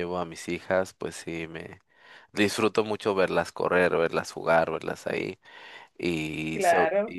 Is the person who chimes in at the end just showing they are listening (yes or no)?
yes